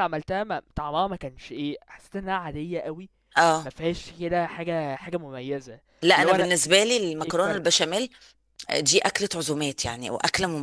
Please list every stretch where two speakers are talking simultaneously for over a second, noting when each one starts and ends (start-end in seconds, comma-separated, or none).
none